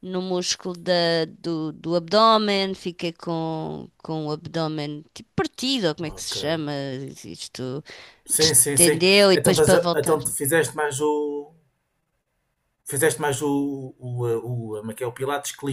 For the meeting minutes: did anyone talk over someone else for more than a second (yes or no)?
yes